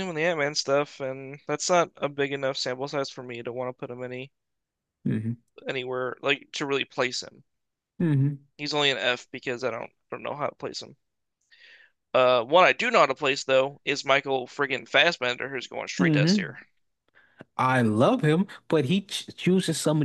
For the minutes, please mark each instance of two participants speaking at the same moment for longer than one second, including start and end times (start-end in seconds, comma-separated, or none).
none